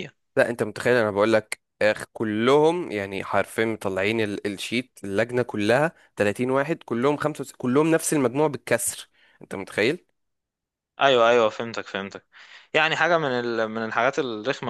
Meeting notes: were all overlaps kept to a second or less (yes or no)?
yes